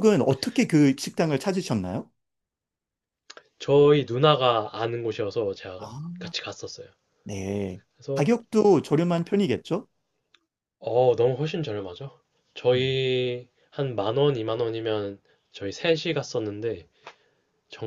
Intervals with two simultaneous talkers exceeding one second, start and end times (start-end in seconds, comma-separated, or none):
none